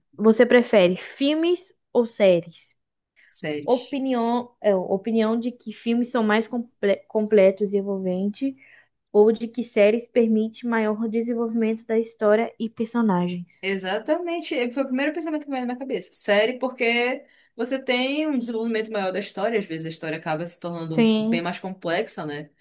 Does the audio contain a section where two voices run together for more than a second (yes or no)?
no